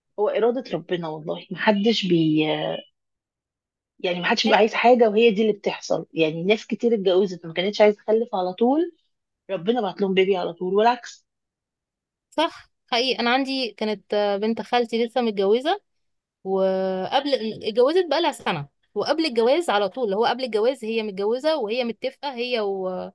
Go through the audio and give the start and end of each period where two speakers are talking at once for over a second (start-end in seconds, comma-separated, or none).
none